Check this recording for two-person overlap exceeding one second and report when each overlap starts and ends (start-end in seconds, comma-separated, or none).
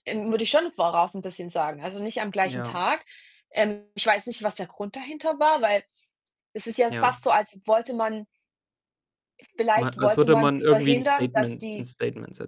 9.7-11.9